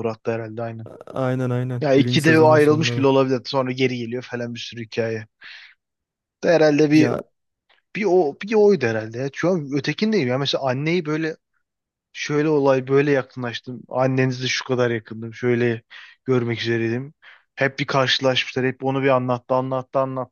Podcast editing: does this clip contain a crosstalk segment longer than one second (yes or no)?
yes